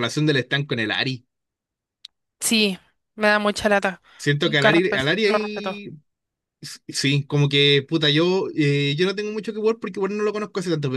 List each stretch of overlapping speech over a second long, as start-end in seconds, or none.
4.4-5.8